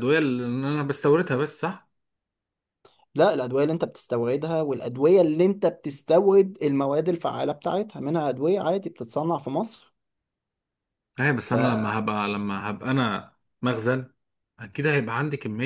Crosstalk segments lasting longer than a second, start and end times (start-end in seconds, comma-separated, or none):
none